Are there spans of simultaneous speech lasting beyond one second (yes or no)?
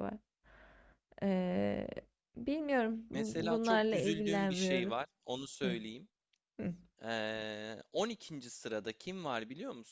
yes